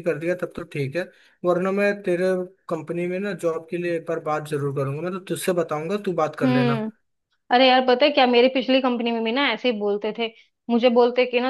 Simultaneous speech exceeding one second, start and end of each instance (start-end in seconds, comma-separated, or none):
none